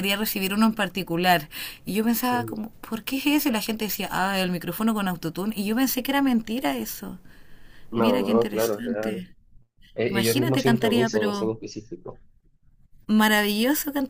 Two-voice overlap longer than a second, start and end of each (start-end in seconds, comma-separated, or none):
8.0-9.2, 10.1-11.5